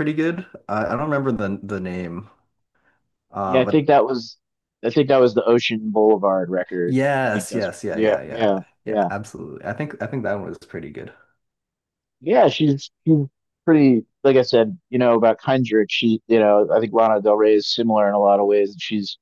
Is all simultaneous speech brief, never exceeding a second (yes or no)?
no